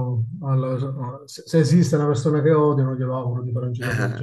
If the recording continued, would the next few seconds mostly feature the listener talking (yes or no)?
yes